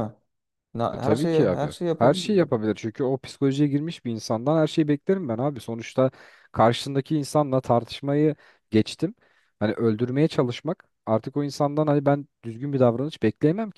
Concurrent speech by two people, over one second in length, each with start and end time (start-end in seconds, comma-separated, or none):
0.9-2.5